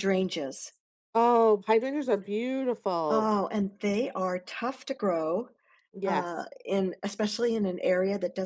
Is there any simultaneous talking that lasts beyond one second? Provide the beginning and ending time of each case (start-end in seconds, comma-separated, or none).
none